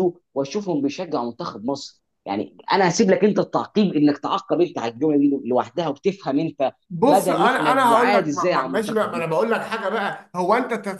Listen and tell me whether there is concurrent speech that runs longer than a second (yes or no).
yes